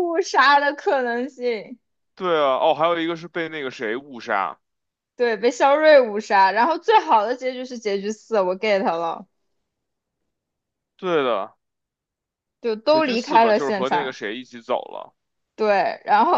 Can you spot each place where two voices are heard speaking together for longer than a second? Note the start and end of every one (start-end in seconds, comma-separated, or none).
12.9-14.2